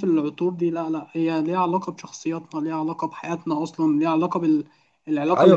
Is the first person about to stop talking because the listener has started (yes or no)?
yes